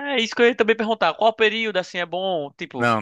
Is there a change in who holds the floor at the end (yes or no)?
no